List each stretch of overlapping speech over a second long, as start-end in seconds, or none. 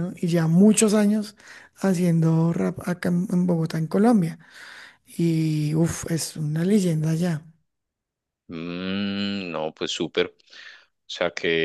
none